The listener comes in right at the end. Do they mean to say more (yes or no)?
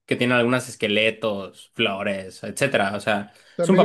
yes